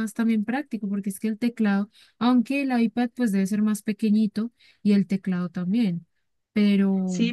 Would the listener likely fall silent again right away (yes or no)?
no